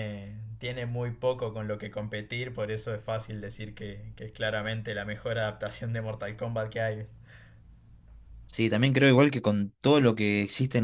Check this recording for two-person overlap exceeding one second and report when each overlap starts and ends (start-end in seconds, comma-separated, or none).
none